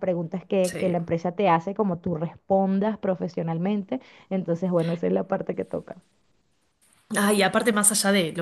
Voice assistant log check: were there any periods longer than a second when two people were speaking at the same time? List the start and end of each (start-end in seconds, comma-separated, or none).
none